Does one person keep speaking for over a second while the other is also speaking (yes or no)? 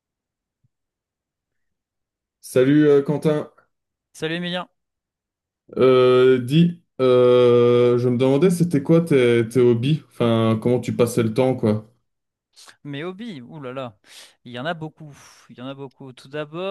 no